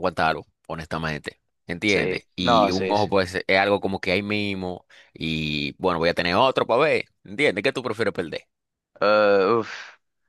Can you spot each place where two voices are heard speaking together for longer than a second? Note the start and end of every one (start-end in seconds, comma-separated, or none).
1.9-3.2